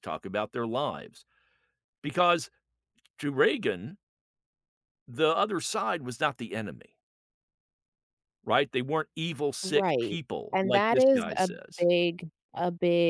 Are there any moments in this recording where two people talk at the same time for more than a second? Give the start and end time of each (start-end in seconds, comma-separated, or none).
9.6-11.9